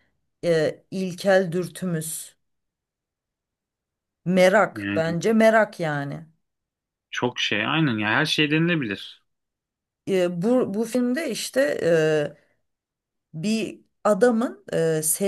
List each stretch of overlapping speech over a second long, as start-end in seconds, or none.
none